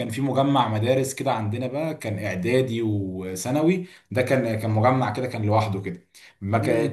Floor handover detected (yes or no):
no